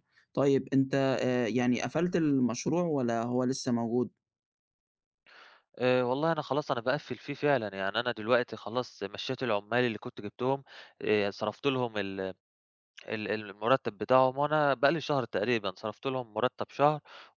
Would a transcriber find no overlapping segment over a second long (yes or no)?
yes